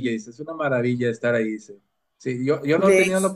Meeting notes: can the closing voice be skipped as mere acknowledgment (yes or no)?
yes